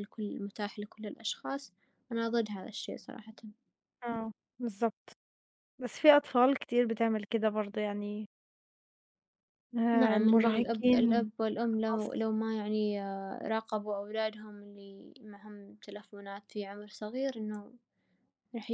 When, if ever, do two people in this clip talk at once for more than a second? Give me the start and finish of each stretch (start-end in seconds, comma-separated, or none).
9.9-12.1